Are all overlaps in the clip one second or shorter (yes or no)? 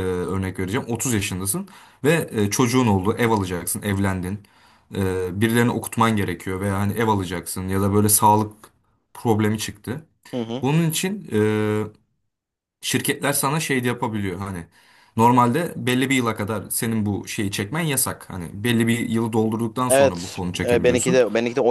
no